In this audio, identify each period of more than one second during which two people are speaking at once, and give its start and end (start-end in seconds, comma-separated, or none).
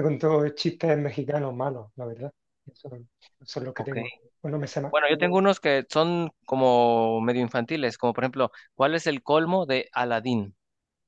none